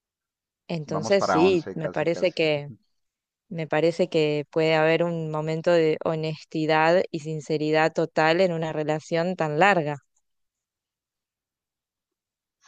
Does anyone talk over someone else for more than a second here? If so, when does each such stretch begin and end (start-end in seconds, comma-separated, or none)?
0.9-2.4